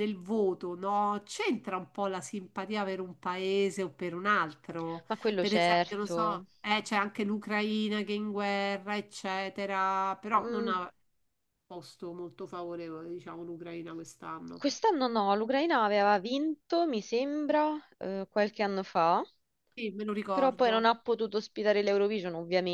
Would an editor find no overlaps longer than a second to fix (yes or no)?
no